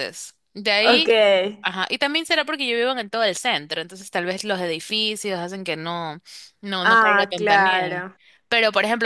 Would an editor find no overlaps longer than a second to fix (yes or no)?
no